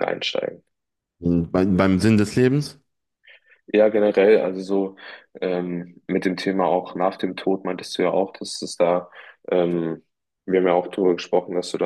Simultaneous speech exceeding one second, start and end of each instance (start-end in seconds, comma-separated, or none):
none